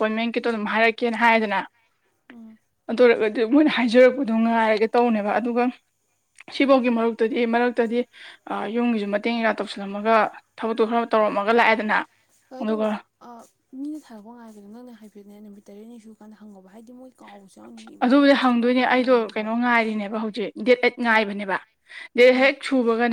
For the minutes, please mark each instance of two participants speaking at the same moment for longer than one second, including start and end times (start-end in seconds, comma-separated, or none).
18.0-19.5